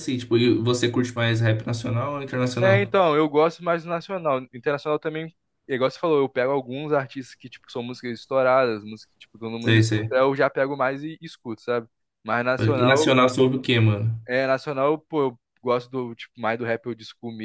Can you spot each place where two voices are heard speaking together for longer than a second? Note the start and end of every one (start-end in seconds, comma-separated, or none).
none